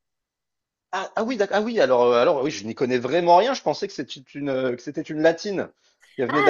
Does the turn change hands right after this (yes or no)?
yes